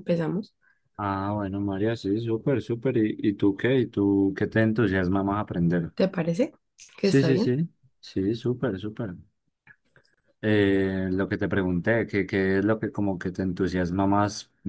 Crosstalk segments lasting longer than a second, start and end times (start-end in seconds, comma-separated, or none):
none